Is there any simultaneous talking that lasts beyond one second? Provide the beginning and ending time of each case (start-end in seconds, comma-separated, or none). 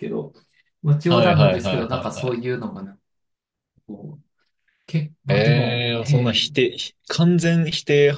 1.1-2.4, 5.3-6.5